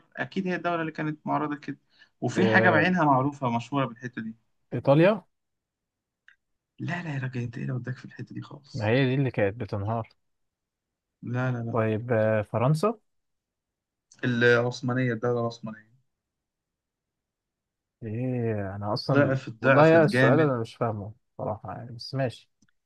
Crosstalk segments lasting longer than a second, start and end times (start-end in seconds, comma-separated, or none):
19.1-20.5